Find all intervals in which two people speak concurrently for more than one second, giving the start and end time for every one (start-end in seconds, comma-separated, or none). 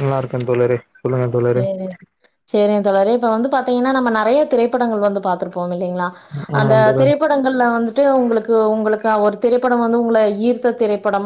none